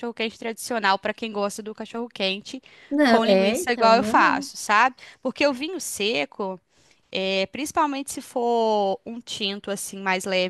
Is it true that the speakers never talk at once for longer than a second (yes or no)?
no